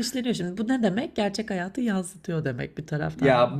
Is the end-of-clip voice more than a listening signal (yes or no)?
yes